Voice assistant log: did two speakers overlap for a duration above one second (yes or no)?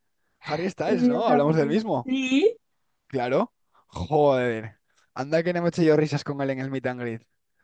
yes